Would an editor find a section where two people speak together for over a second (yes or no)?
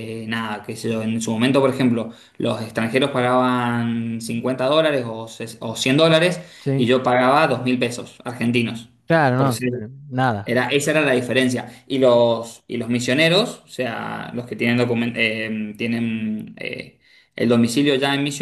no